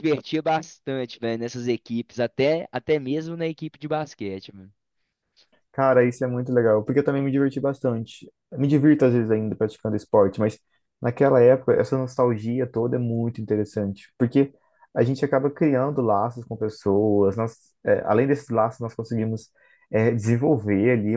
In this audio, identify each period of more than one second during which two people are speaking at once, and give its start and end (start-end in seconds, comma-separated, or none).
none